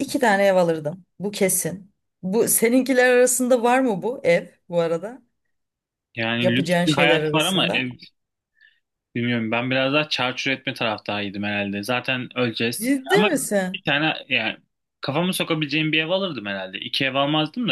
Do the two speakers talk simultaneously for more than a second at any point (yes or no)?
yes